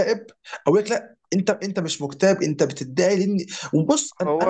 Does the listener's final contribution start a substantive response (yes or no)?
no